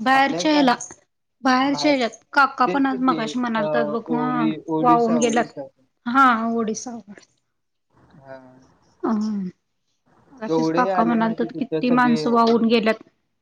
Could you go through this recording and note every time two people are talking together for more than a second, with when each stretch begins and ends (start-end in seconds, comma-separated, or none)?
2.7-5.5, 10.9-12.2